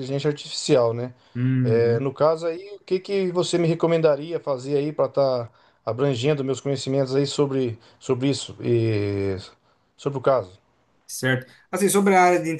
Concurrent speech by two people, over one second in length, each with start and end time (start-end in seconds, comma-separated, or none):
none